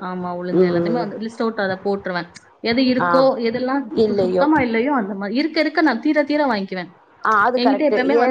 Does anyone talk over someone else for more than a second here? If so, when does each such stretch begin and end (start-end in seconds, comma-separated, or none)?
none